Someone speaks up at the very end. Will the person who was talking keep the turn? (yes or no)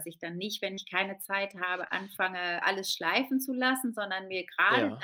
yes